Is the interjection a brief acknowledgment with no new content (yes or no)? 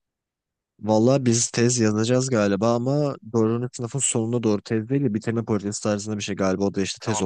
no